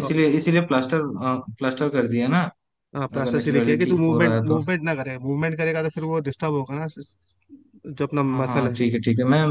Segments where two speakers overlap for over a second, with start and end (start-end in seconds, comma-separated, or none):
3.2-4.6